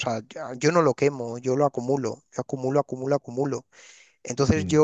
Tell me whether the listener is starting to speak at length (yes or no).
no